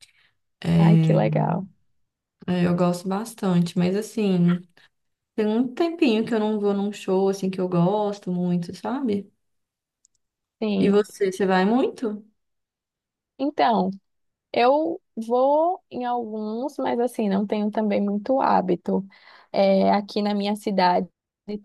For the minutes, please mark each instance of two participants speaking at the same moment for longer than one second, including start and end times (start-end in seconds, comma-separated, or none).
none